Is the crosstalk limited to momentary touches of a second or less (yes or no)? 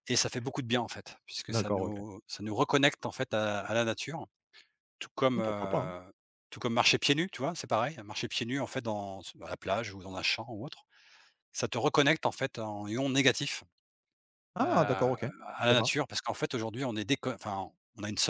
no